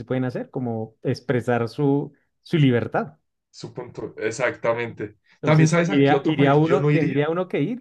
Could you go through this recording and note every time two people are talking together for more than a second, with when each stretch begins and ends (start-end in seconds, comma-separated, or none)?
5.4-7.2